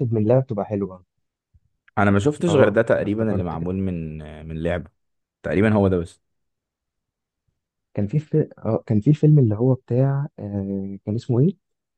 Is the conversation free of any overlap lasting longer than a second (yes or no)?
no